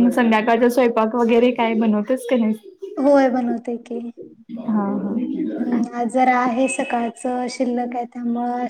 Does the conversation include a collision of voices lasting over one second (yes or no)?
no